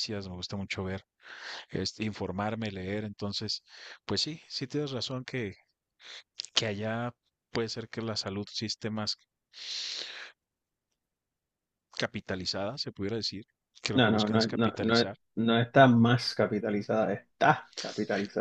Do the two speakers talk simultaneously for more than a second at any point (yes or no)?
yes